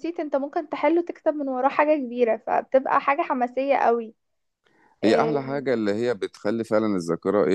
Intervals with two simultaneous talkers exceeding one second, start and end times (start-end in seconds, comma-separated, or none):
none